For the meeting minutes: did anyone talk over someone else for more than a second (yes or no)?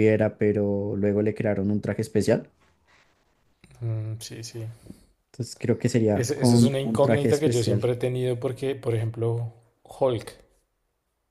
yes